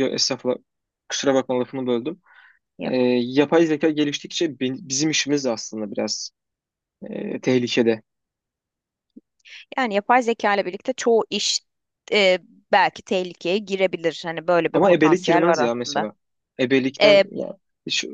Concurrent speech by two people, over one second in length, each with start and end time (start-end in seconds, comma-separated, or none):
14.7-16.1